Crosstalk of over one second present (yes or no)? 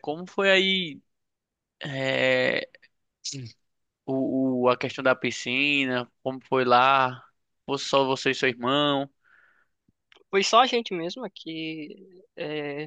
no